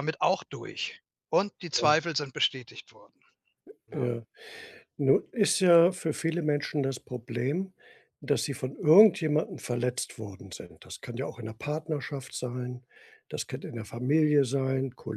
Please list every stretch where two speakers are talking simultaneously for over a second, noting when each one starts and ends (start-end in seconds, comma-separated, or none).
none